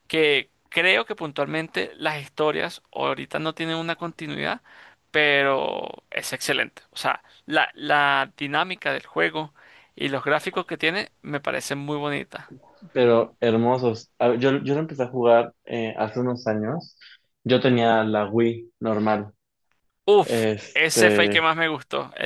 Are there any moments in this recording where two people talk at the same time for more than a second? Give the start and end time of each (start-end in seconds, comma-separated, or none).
20.2-21.5